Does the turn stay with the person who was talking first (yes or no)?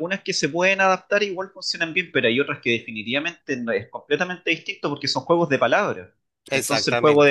yes